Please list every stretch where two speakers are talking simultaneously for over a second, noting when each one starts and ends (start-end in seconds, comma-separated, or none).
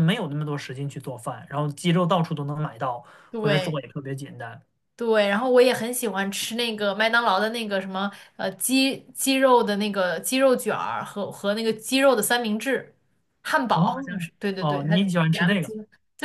13.7-15.7